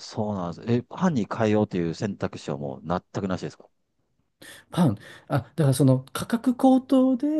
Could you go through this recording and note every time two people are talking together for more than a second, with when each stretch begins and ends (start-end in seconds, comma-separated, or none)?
none